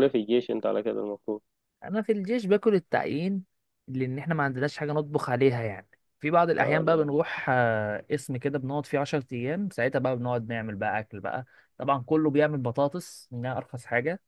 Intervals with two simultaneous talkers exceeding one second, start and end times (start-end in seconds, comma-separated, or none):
none